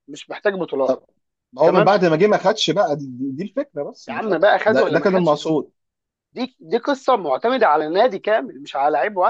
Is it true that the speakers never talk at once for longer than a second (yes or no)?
no